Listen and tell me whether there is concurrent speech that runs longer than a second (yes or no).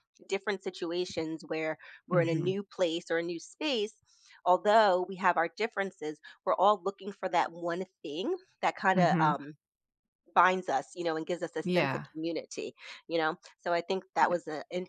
no